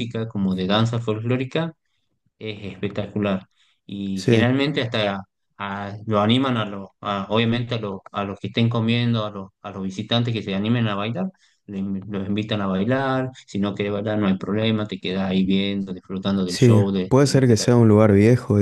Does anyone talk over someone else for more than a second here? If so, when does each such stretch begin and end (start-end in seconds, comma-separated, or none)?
16.4-17.9